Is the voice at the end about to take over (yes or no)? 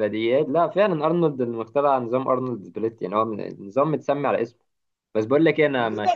no